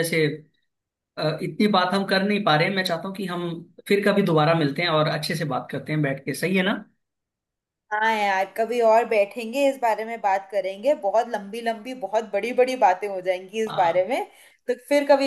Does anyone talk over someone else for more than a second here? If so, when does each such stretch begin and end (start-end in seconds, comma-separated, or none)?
none